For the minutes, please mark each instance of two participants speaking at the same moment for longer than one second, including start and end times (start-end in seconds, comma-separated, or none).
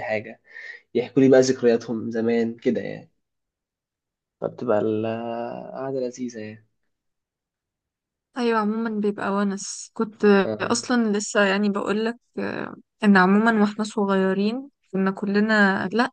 none